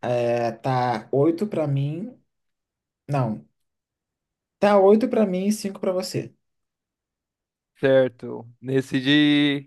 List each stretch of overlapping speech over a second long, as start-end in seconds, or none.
none